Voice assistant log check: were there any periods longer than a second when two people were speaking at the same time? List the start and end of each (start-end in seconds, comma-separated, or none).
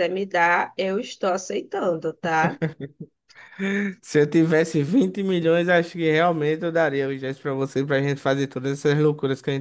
none